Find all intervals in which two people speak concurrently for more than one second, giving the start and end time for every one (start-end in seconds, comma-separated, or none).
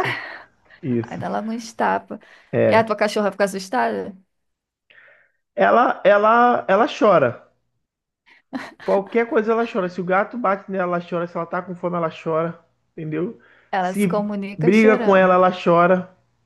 13.8-15.4